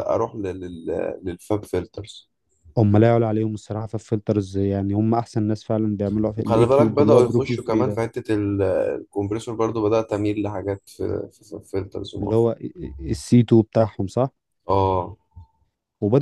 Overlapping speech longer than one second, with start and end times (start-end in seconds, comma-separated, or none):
6.4-8.0